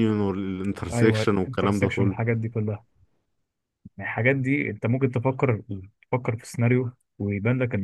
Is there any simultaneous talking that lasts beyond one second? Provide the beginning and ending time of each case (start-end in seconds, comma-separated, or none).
0.9-2.2